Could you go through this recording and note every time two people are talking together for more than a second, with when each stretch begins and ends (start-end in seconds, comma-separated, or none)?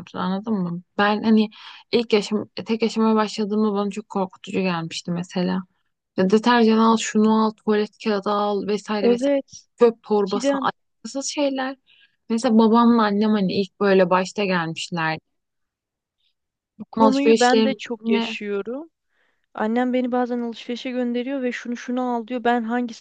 16.9-18.4